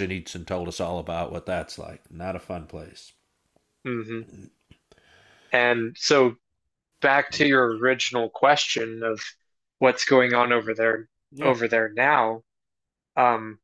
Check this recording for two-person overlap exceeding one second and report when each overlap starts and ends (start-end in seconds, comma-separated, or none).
none